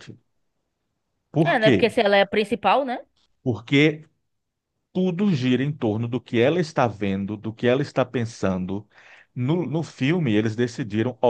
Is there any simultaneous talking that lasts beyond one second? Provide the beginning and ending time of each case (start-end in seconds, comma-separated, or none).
none